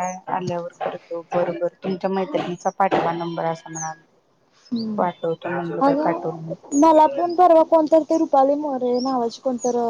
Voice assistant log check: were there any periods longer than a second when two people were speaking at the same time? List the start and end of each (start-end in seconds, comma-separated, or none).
none